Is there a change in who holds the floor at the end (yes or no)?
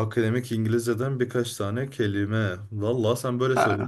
no